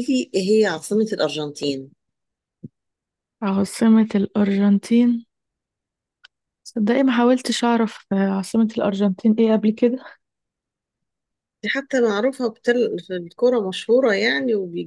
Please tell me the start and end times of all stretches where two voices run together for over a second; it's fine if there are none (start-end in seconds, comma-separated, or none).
none